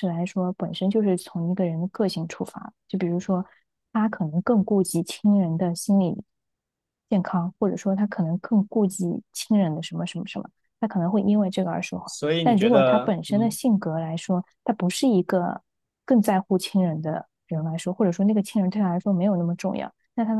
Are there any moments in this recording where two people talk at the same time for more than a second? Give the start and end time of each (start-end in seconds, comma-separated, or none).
12.0-13.6